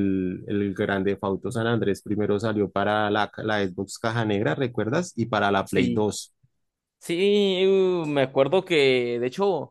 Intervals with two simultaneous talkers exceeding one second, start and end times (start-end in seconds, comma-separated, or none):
none